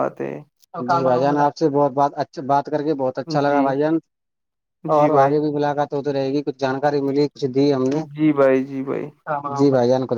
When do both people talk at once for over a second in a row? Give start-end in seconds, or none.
none